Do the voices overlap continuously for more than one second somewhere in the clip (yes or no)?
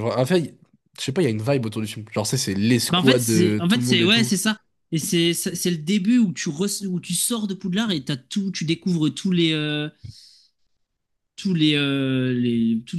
yes